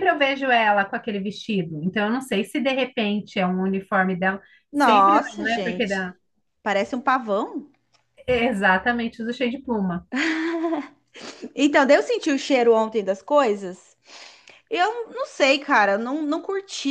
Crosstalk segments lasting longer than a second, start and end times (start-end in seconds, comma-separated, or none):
4.7-6.1